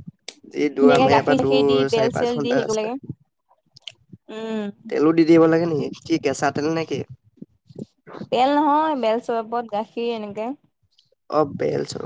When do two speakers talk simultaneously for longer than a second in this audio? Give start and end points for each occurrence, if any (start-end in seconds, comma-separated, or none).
0.8-2.9